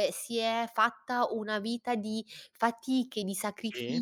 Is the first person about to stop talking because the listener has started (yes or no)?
no